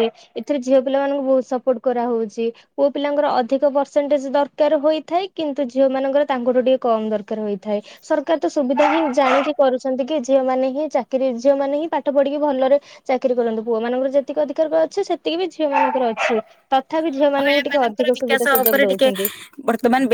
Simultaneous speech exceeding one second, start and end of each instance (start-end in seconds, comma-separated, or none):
17.1-19.1